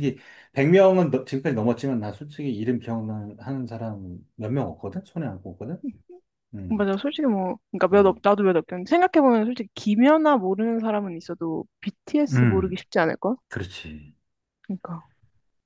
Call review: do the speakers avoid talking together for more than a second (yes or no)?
yes